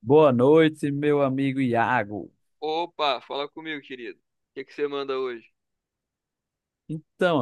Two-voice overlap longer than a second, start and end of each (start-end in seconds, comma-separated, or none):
none